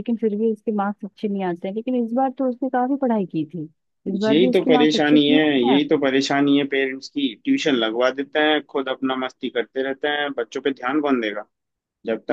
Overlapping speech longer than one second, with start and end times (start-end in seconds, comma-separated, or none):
4.3-5.8